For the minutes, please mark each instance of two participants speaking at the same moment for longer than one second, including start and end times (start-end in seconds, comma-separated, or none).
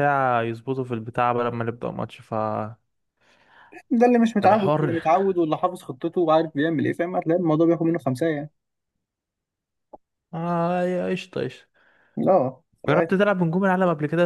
none